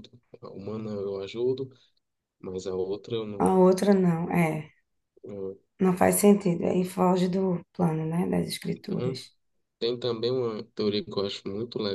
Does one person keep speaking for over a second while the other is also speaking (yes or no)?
no